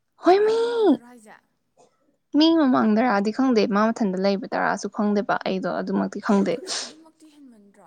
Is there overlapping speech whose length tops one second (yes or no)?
no